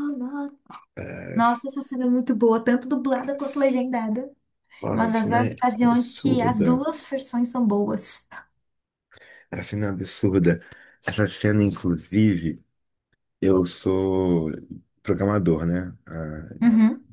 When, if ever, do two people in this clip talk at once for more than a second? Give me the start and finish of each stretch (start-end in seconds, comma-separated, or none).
4.9-6.8